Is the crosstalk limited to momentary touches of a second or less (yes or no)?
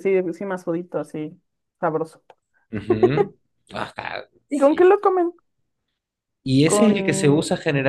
yes